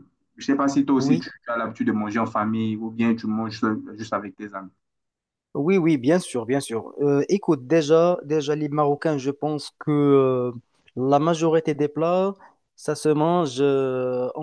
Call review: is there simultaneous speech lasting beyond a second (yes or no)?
no